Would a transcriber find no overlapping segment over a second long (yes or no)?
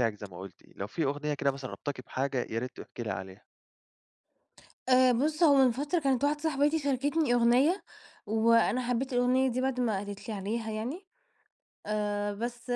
yes